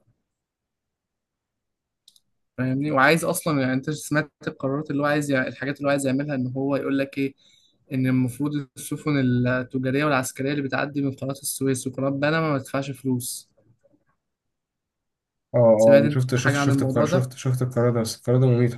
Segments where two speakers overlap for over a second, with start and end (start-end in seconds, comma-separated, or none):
16.0-17.3